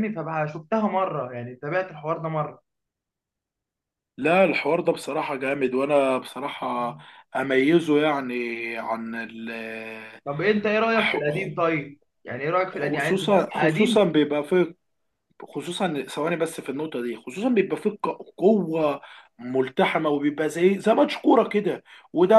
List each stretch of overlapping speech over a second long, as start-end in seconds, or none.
12.7-14.1